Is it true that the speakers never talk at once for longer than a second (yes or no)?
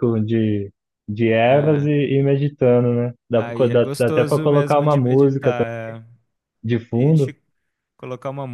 no